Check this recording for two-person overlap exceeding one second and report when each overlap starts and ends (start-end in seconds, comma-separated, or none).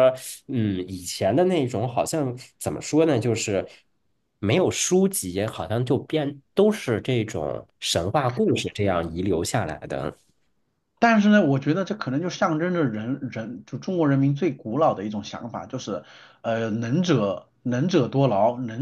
none